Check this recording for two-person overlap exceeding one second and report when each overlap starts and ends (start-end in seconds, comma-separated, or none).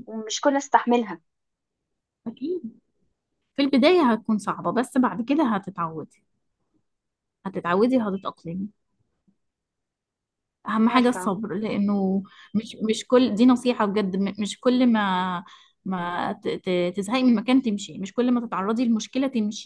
none